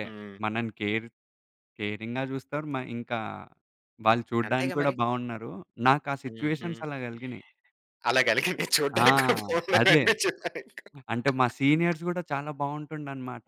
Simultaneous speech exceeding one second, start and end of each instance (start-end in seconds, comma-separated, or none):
none